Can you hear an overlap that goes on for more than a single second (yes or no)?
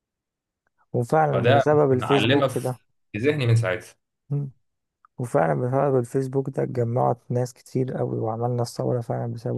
yes